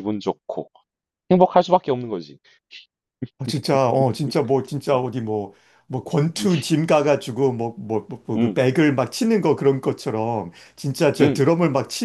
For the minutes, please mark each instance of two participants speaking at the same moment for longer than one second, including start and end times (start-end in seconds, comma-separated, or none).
none